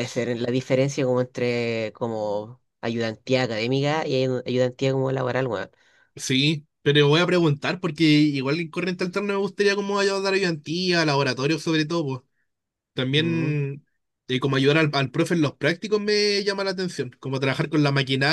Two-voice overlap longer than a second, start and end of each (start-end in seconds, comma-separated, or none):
none